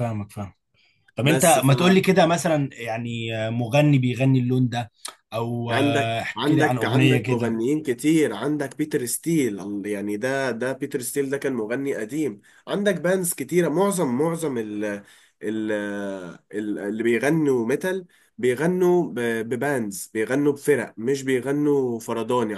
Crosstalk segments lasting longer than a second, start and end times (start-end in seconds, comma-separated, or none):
5.7-7.6